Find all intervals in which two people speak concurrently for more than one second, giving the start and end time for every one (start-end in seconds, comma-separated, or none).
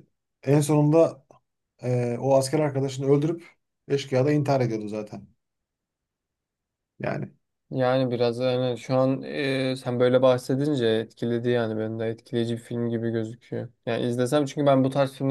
none